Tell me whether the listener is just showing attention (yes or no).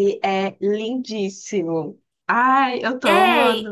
no